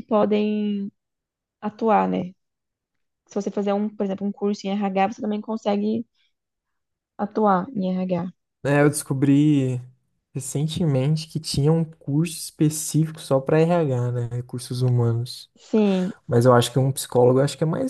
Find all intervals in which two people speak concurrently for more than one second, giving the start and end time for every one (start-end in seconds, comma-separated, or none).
none